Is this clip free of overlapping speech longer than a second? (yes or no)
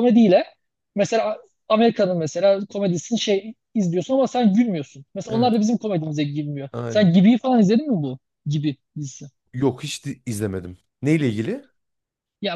yes